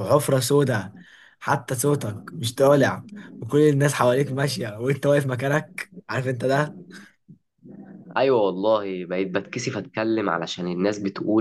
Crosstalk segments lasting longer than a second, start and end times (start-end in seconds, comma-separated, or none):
none